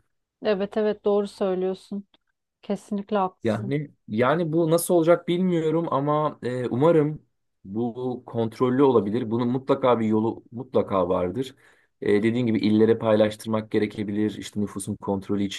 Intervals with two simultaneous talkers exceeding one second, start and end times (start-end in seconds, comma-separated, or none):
none